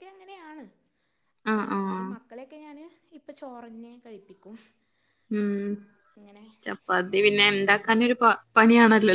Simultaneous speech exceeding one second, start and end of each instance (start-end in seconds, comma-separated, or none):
none